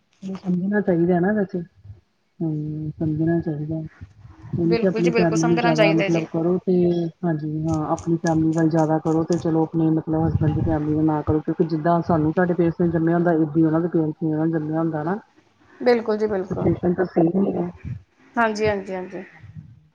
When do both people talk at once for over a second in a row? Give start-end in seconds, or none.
4.7-6.2